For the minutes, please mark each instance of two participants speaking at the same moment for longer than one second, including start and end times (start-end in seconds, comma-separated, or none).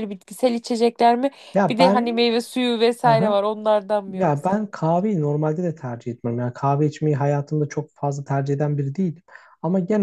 none